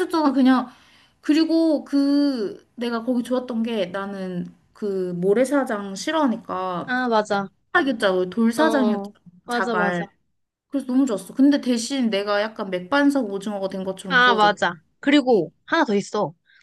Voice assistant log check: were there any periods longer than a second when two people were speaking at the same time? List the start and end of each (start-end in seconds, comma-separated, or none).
8.6-10.1